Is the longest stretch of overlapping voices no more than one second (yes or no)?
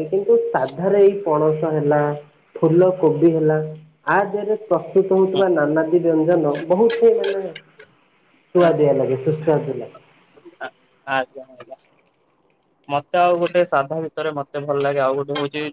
yes